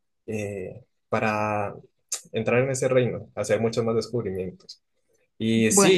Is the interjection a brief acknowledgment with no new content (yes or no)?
yes